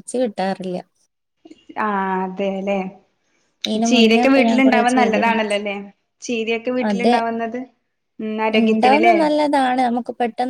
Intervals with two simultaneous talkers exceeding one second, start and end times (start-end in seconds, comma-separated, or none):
3.9-5.4